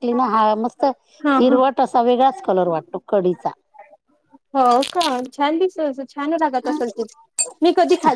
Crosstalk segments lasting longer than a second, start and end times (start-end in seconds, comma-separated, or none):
none